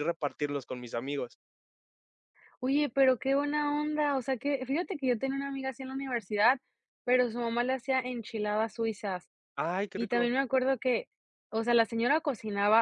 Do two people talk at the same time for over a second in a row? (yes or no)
no